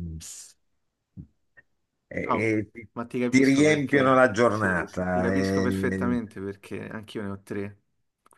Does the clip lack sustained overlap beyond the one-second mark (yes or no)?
no